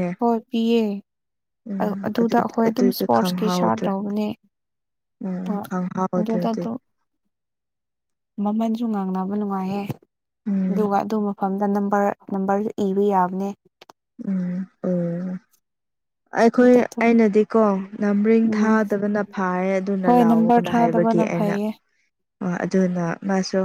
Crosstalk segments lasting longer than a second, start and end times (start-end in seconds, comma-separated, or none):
2.1-3.9